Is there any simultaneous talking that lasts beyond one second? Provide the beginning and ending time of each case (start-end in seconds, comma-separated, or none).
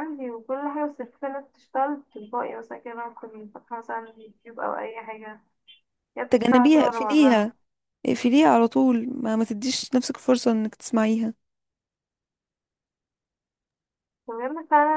6.3-7.5